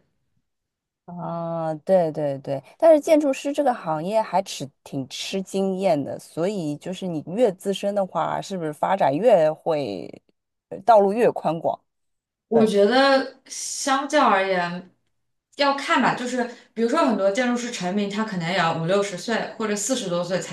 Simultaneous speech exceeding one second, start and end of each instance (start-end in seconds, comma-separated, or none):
none